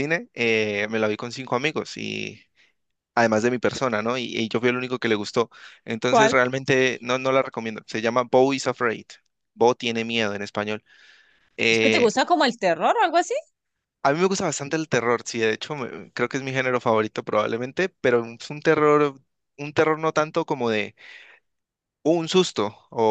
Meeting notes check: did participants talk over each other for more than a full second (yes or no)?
no